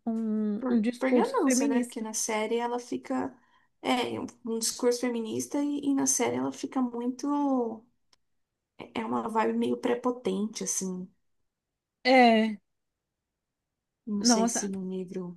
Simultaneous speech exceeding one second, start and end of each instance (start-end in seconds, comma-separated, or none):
0.6-2.1